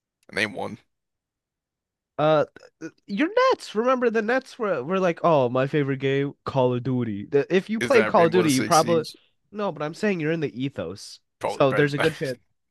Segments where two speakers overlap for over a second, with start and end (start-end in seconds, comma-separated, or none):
7.8-9.1